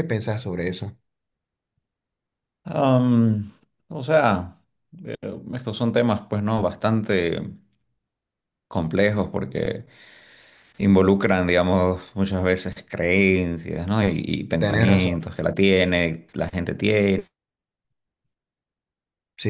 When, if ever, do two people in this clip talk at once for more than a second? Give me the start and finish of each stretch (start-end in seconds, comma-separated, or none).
none